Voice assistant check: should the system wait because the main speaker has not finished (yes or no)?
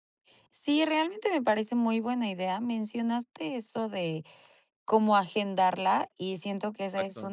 yes